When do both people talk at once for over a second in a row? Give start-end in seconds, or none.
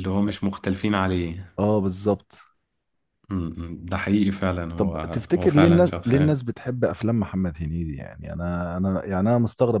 4.8-6.4